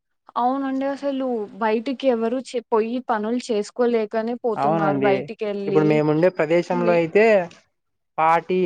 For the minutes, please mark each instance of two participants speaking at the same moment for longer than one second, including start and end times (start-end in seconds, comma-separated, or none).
none